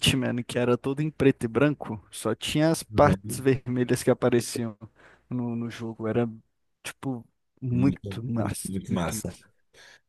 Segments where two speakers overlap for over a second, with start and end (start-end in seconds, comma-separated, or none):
7.7-9.4